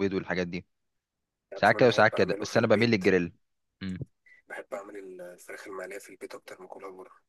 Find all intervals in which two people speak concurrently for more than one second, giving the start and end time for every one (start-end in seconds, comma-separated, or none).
1.6-3.0